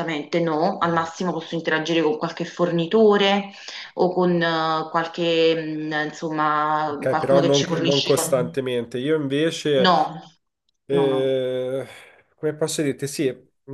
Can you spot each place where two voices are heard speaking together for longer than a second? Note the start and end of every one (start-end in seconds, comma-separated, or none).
6.8-8.6